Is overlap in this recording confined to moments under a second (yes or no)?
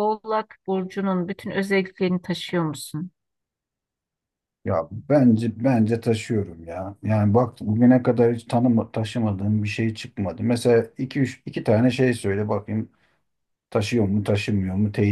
yes